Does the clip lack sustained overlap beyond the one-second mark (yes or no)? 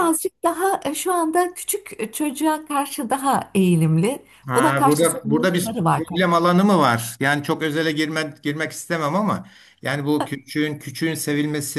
no